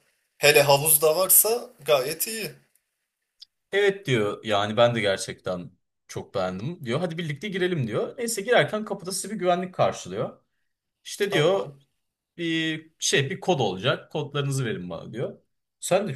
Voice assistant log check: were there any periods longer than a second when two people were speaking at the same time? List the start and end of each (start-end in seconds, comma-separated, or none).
none